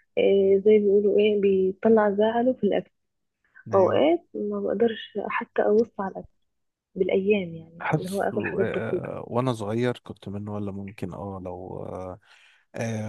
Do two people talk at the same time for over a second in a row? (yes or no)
yes